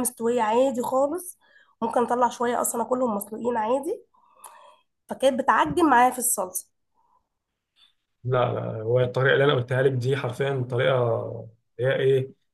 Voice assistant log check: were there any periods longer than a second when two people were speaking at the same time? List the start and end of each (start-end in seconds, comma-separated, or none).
none